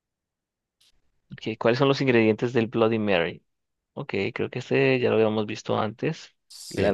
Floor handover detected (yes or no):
yes